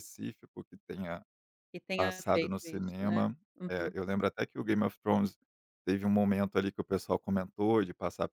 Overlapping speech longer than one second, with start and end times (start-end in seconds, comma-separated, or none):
2.0-3.9